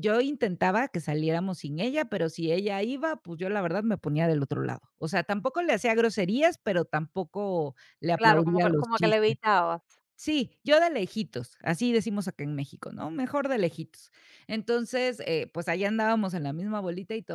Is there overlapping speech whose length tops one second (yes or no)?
yes